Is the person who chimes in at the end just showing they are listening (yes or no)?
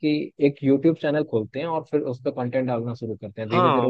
no